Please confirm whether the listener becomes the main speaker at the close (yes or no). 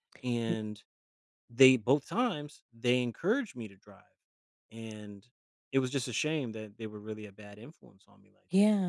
yes